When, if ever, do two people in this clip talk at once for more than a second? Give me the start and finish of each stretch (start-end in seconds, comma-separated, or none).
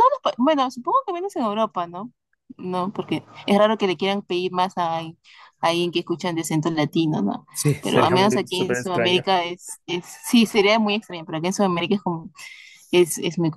7.5-9.2